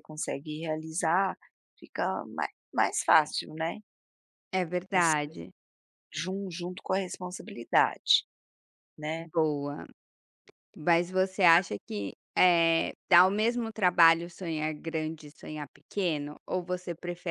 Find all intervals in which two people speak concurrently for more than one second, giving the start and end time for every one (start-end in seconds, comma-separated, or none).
none